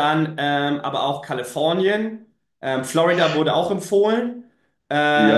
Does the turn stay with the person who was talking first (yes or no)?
no